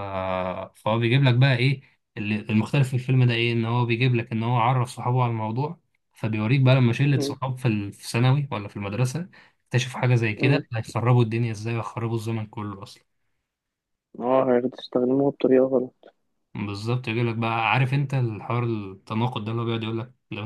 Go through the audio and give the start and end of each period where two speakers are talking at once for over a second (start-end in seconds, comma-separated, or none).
none